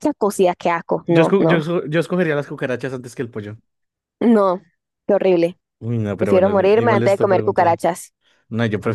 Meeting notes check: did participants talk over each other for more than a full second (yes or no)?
yes